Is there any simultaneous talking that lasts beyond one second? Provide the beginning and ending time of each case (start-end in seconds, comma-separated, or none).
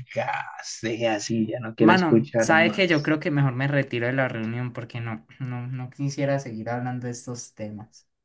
1.8-3.2